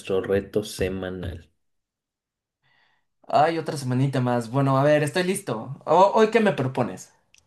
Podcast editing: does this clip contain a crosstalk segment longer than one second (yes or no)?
no